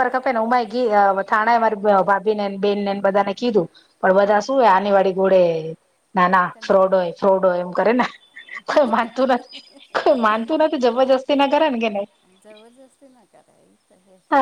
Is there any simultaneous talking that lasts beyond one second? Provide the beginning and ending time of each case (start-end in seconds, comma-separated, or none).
none